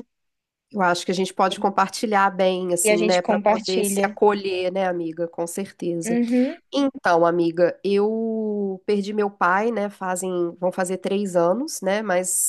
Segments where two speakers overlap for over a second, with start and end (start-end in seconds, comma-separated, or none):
2.8-4.1